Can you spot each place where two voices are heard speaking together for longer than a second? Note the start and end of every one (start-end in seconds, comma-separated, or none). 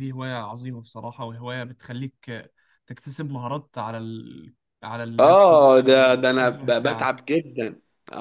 5.2-7.2